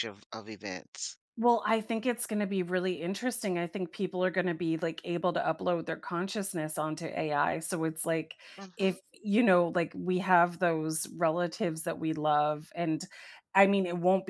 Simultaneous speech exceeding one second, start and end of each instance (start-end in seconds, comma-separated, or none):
none